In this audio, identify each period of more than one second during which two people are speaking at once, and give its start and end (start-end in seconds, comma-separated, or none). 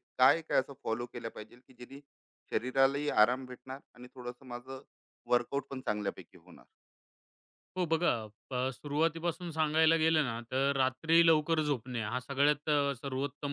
none